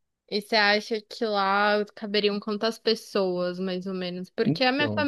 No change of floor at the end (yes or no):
yes